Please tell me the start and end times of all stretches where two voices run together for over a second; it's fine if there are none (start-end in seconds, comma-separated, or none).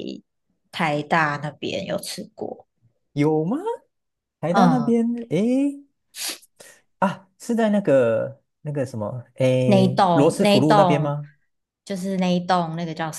9.6-11.1